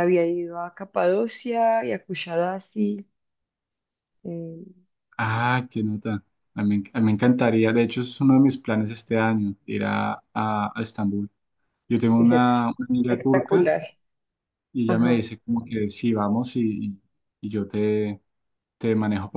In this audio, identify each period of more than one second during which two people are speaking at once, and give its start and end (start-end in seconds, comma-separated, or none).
12.2-13.7